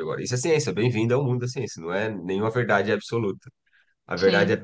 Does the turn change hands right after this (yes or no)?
no